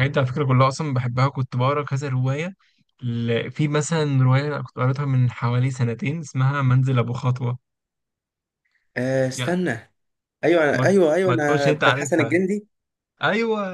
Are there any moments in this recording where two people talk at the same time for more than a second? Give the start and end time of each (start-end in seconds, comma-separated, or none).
10.7-12.4